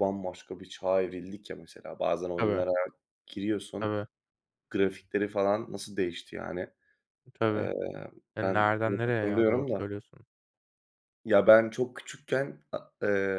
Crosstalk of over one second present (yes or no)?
yes